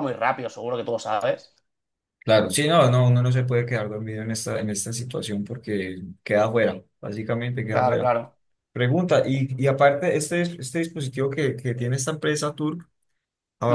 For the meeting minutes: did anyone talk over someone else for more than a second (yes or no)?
no